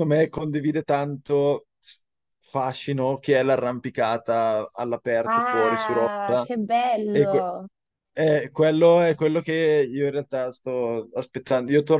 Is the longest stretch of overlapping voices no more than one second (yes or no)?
no